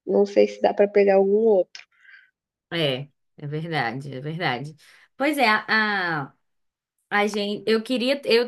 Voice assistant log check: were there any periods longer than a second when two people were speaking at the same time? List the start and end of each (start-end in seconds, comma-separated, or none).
none